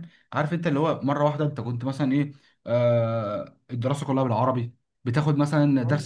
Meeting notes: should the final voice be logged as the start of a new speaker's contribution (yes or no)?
no